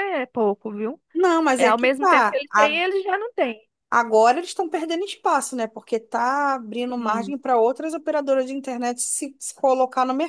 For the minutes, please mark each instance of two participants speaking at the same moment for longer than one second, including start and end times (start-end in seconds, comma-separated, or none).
1.6-2.8